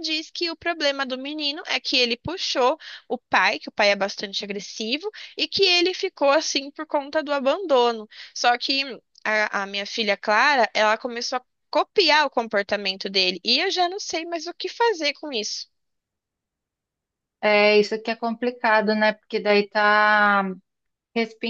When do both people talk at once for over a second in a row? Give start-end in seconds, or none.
none